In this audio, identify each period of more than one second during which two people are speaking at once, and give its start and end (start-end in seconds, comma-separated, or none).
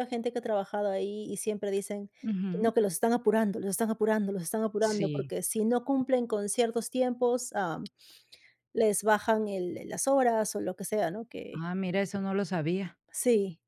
none